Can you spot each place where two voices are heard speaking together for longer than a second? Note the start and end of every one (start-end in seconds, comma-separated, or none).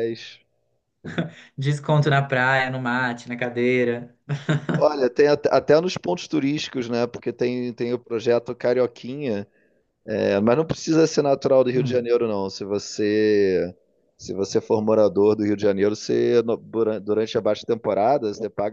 none